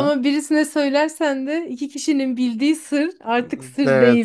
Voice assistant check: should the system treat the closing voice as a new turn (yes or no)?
yes